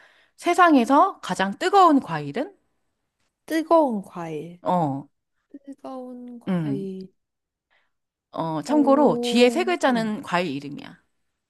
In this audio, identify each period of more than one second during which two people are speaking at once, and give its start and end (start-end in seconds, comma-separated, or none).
8.7-10.1